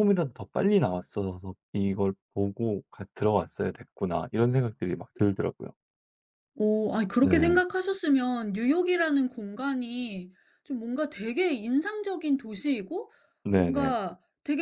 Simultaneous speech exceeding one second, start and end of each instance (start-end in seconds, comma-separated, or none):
none